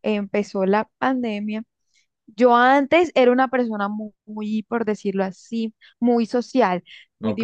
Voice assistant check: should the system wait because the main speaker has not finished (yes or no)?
yes